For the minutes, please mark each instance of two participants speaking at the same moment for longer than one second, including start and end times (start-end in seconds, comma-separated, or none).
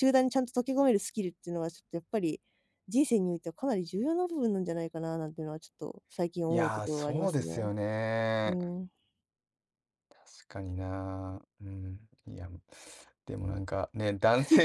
6.5-7.7